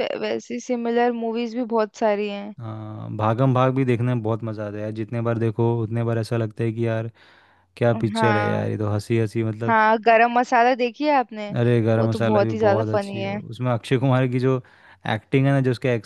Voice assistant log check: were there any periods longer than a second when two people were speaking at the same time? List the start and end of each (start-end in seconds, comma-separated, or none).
12.0-13.4